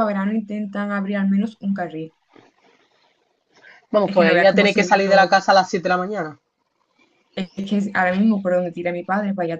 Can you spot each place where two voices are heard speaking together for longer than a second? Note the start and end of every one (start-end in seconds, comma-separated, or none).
4.0-5.3